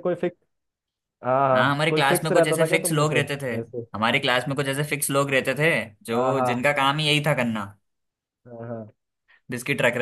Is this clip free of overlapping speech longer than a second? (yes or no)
no